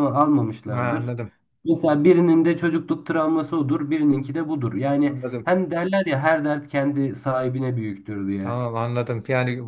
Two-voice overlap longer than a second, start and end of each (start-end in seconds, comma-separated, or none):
none